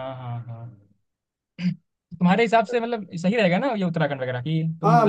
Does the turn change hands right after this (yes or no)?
yes